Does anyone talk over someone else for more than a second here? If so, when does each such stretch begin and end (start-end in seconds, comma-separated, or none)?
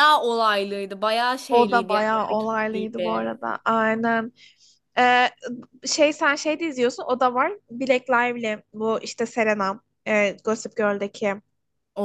1.5-3.2